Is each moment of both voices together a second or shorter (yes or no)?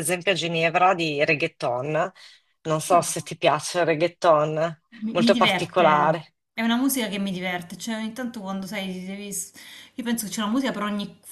no